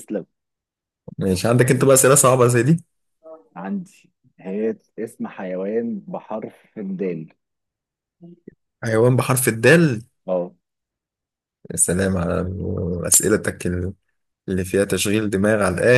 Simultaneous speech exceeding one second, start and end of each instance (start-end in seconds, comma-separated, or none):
none